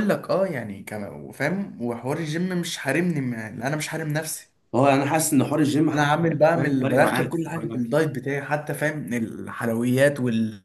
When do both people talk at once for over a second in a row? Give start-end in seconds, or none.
5.9-7.9